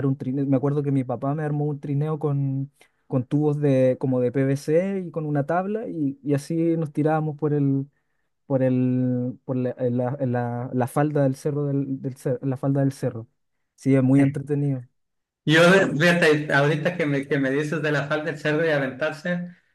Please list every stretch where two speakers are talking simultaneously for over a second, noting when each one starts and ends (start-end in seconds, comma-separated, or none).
none